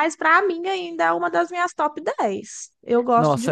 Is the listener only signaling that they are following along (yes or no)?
no